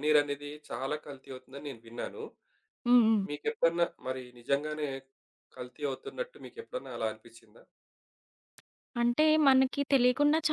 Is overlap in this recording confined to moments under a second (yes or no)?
yes